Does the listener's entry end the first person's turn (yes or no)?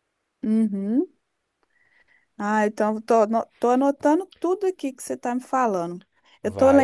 no